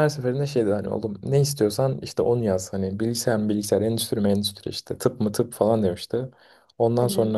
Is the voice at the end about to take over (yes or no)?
no